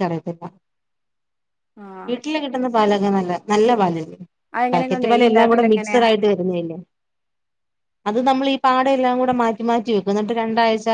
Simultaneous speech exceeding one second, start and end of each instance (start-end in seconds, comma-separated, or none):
4.7-6.0